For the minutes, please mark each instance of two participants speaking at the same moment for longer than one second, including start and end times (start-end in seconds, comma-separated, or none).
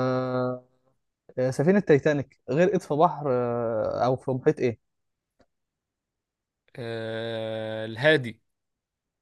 none